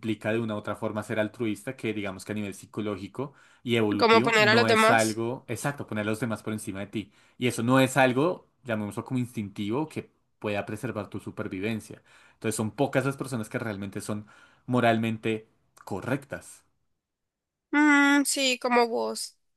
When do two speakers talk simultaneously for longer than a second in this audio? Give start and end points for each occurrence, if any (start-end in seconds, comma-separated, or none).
4.0-5.2